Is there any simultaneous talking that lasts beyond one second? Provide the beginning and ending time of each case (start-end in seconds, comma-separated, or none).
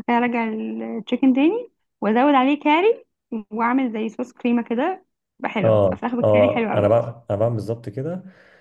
5.6-7.0